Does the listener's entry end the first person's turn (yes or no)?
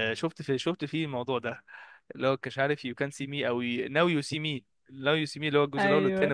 no